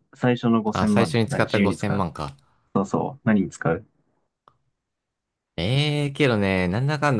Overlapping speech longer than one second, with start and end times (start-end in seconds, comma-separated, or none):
0.7-2.1